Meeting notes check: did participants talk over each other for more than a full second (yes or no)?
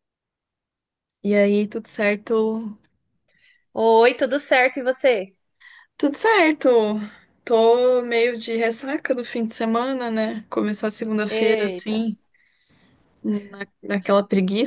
no